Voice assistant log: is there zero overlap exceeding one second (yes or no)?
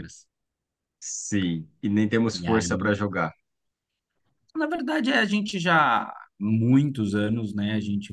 yes